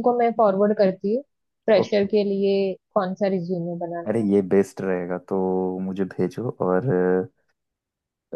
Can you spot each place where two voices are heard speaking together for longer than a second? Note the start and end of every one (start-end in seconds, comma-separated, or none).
none